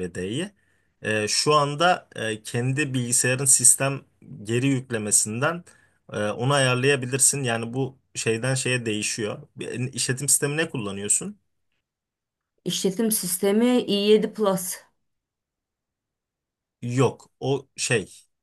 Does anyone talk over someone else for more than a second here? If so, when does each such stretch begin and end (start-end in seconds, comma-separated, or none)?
none